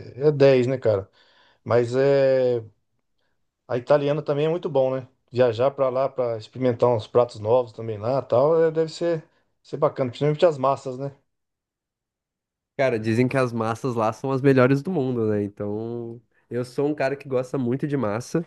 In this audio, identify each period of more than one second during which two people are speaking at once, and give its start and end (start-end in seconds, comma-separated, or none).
none